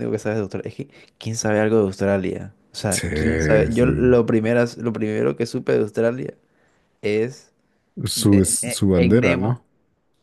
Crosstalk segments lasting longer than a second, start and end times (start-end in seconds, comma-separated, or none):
8.2-9.6